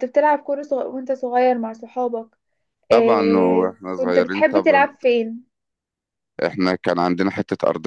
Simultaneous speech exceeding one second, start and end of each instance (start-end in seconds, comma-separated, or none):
2.9-4.9